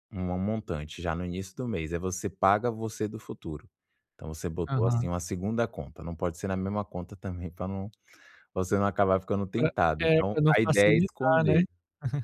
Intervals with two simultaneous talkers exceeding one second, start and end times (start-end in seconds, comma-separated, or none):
9.6-11.6